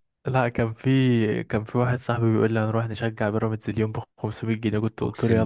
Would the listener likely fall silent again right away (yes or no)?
no